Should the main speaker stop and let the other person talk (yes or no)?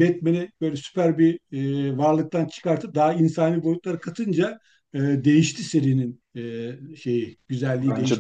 yes